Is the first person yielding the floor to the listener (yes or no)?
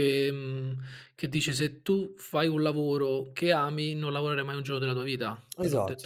yes